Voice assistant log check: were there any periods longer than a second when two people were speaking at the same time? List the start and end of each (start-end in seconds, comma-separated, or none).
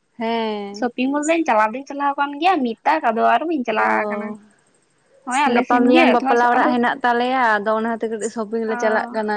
none